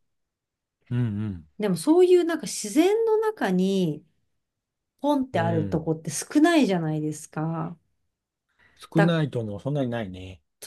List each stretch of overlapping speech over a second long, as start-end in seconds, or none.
none